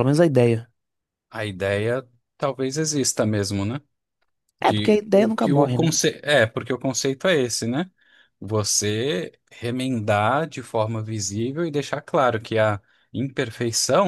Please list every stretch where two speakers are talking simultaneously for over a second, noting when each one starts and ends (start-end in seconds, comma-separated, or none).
4.6-5.9